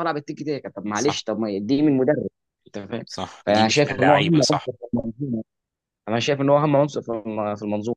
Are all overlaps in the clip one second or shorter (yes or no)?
no